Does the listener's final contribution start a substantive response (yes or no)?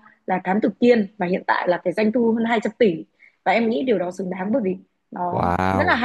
no